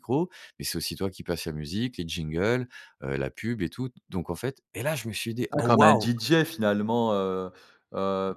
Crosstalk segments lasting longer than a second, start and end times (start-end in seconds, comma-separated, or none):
none